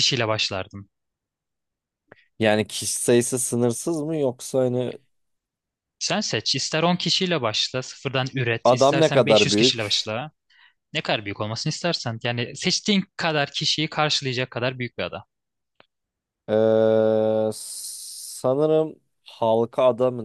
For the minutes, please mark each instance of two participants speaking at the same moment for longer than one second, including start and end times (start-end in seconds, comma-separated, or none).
8.6-10.1